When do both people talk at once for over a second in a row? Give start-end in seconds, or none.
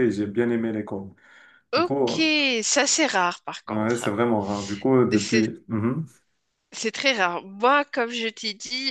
none